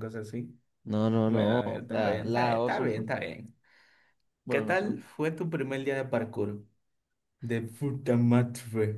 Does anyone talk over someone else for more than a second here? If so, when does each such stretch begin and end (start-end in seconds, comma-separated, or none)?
1.2-3.2